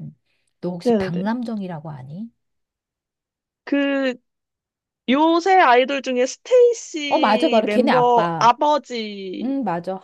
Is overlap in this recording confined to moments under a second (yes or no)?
no